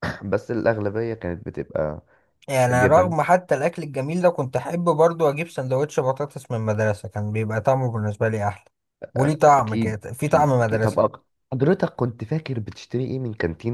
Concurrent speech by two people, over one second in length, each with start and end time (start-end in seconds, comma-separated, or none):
9.5-11.1